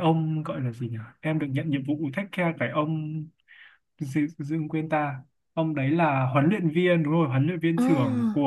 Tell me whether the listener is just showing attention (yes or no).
yes